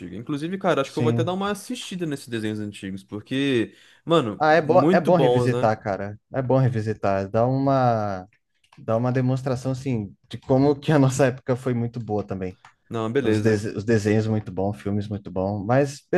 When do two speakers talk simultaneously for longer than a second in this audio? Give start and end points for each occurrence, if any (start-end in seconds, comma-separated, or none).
4.4-5.7